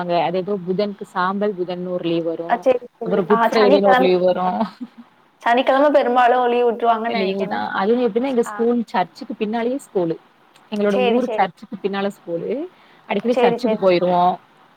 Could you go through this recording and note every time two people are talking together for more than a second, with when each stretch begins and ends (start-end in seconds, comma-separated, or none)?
none